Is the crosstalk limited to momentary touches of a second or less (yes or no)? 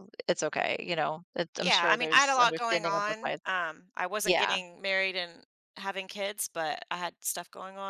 no